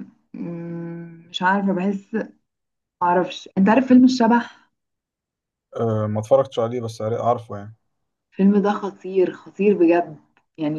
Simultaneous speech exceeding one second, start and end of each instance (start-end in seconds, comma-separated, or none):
none